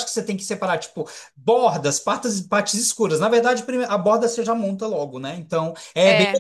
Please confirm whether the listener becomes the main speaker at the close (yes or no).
no